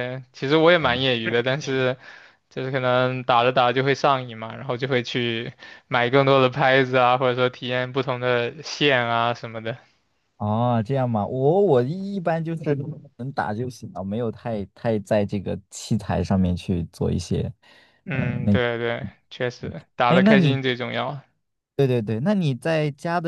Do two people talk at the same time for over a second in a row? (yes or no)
no